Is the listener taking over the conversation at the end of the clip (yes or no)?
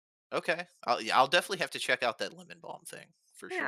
yes